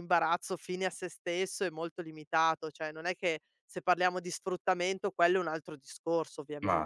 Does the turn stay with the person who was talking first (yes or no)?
no